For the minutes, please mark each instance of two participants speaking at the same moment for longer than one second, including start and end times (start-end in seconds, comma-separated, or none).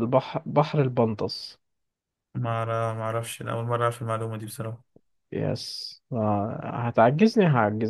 none